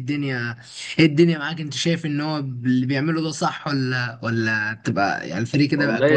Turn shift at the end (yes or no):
yes